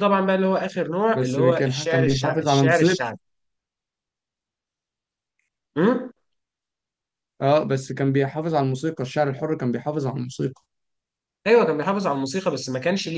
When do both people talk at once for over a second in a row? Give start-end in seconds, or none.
1.1-3.0